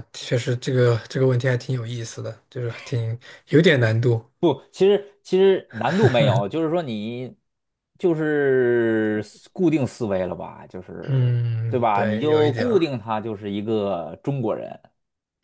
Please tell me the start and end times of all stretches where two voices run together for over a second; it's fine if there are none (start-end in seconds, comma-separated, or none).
11.1-12.9